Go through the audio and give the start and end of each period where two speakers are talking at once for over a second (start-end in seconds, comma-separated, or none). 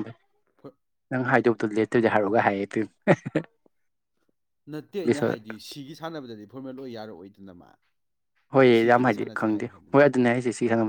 none